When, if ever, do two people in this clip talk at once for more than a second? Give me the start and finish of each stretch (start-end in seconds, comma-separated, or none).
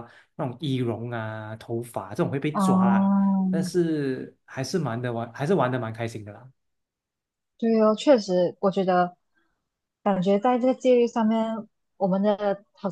none